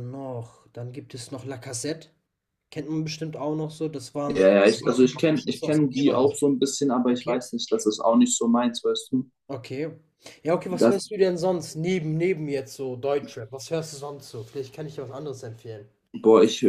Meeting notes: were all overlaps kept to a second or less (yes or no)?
no